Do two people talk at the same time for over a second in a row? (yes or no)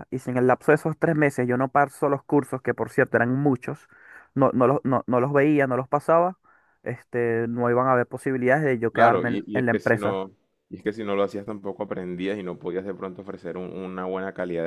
yes